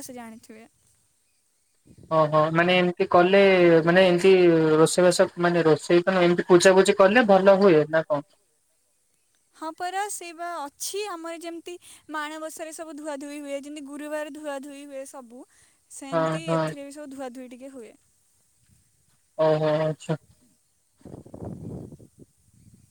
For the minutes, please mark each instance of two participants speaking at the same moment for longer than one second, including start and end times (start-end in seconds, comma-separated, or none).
none